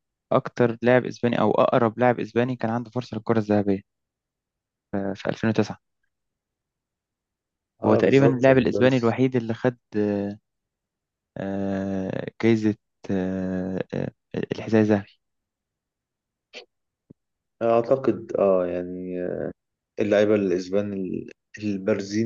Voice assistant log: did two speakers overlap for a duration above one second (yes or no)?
yes